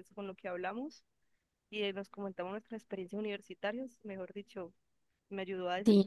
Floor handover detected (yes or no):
yes